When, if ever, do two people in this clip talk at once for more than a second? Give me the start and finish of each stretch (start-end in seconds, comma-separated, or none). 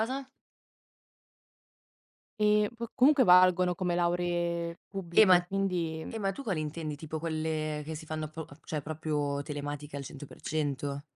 none